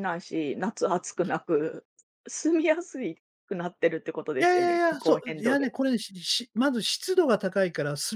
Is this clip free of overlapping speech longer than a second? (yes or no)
no